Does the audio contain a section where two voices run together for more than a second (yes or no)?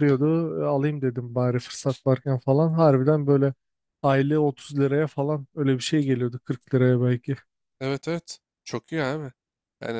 no